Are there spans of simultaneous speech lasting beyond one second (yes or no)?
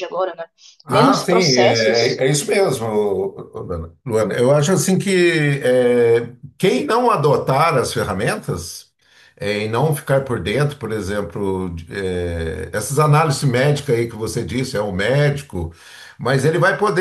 yes